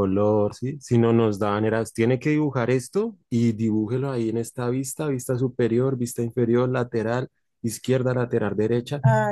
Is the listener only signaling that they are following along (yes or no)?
no